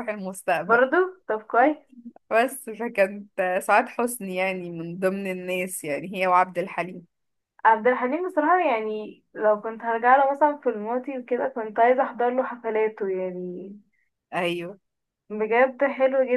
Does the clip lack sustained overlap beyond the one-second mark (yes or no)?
yes